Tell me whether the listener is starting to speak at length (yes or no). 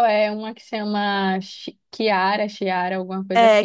yes